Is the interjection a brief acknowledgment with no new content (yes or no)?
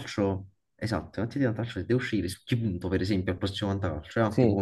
yes